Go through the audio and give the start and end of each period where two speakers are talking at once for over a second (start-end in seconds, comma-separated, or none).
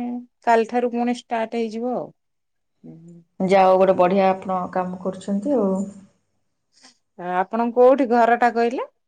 none